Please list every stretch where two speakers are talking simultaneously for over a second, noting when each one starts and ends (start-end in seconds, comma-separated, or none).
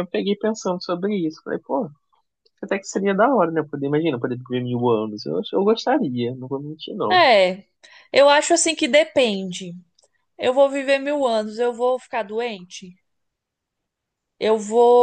none